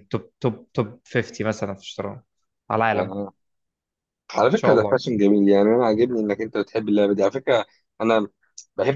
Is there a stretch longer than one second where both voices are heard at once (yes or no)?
no